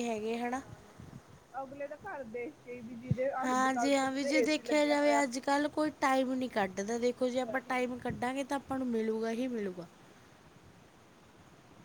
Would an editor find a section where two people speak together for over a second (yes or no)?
yes